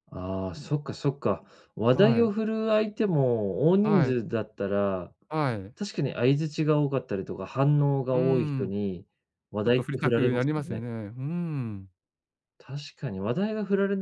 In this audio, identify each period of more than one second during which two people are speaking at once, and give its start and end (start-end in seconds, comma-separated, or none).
9.6-10.8